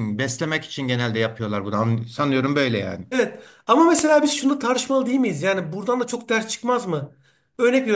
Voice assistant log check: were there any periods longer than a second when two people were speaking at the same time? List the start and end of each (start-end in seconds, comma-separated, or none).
none